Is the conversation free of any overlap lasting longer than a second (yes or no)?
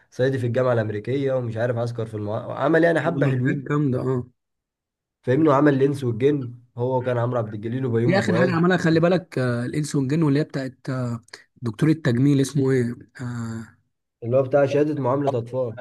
yes